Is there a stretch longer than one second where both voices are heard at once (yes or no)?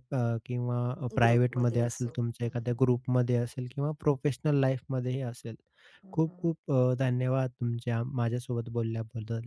yes